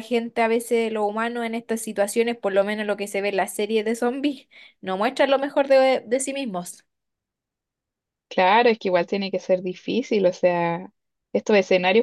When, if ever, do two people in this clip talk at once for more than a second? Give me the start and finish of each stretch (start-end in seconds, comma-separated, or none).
none